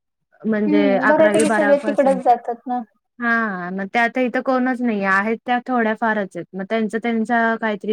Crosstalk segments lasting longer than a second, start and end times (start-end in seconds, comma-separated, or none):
0.7-2.3